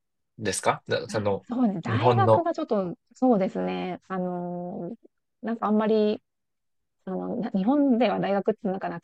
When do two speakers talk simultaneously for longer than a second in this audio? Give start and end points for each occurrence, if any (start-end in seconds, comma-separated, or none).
none